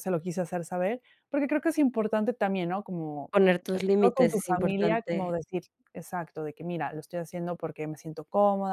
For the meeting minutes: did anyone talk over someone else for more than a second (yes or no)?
yes